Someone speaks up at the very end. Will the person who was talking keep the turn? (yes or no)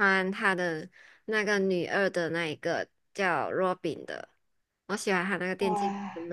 yes